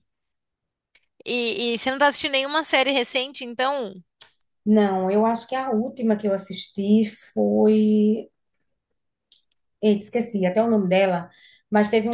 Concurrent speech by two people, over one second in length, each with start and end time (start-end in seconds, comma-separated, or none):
none